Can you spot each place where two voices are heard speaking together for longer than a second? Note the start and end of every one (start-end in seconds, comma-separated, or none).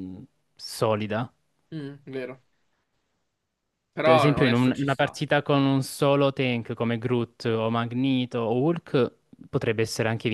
4.0-5.2